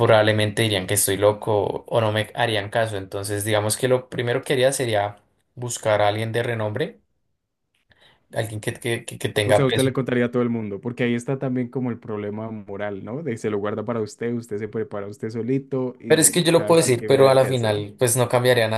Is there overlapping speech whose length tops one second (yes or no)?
yes